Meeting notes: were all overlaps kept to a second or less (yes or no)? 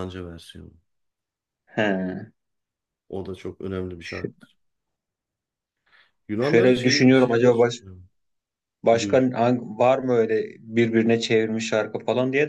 no